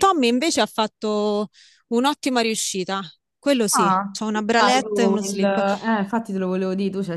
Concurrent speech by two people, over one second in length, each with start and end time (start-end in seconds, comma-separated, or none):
3.7-5.6